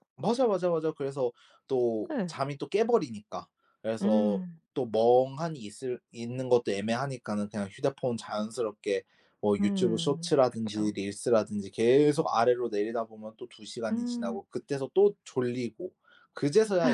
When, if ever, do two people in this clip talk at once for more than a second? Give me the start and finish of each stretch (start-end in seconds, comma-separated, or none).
9.6-10.9